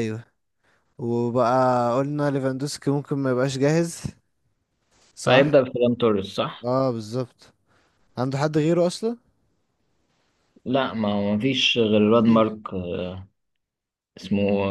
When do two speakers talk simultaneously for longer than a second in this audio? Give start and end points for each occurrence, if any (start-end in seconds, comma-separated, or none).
none